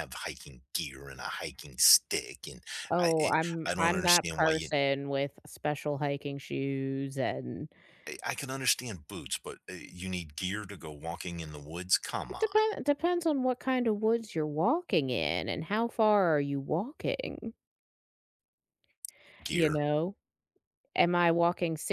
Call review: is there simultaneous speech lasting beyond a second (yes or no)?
yes